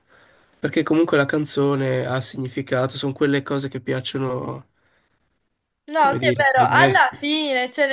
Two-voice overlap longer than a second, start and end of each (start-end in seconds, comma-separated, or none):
6.0-7.2